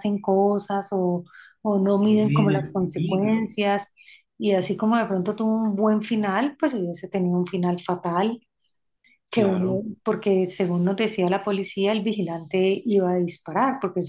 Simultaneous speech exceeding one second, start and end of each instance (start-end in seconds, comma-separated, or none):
2.0-3.5